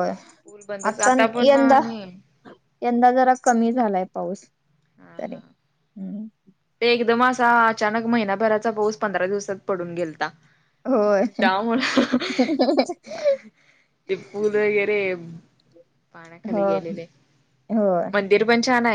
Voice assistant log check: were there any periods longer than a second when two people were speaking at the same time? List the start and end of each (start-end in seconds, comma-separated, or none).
none